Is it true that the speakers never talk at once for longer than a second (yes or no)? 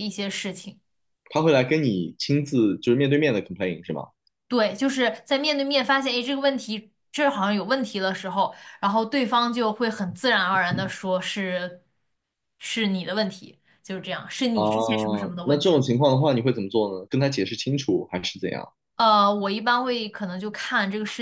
yes